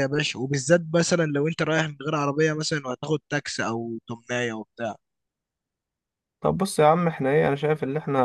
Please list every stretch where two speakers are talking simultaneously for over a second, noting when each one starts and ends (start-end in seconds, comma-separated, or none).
none